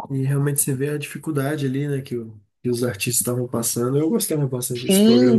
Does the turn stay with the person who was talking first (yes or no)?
no